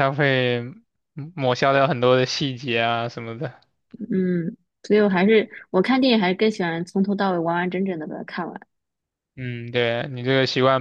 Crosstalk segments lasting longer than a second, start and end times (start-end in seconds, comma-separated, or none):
none